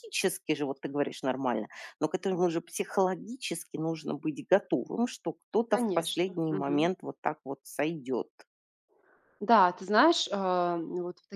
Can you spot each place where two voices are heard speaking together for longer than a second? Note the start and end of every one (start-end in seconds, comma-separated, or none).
5.7-6.9